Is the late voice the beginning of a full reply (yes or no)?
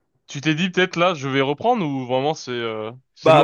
yes